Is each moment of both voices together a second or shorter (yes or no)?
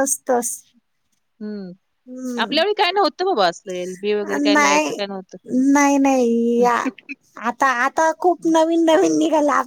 yes